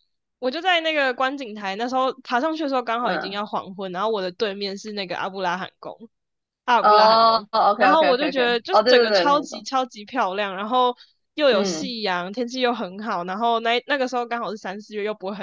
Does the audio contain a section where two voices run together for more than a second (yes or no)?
yes